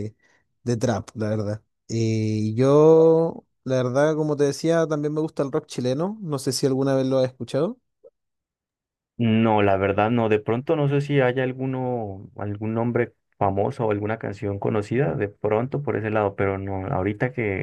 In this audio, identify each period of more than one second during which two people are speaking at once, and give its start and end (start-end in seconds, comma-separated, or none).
none